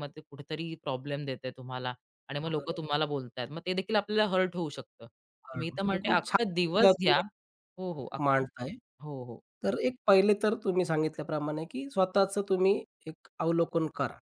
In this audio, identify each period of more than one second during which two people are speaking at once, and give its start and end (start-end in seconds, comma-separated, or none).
5.6-7.2